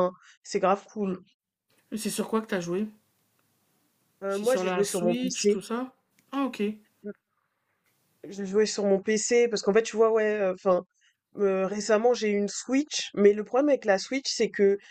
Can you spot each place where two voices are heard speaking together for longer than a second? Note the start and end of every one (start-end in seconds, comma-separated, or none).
4.3-5.6